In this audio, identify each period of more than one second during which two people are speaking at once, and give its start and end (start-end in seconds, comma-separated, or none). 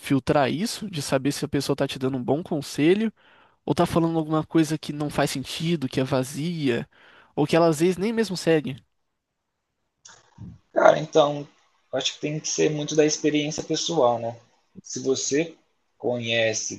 none